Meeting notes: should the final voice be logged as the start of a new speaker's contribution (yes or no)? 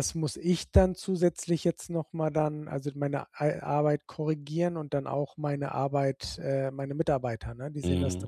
yes